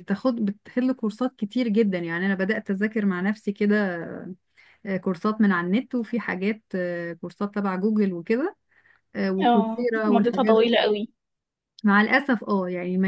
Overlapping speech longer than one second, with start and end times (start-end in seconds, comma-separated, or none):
9.4-10.8